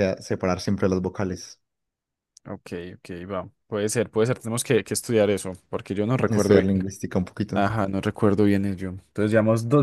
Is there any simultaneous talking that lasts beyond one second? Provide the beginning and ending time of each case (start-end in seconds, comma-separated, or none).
none